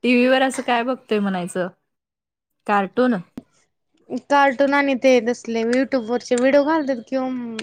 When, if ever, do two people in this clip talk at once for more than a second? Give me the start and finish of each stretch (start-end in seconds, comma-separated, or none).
none